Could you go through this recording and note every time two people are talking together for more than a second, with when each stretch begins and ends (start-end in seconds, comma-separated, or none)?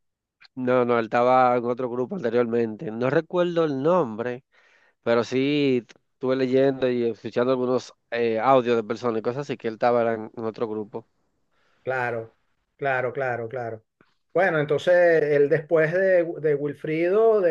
none